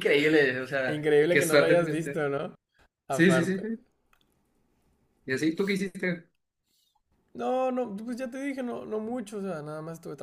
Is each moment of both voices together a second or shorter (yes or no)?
no